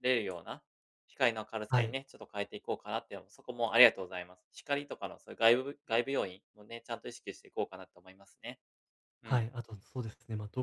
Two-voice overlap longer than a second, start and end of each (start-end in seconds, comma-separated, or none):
none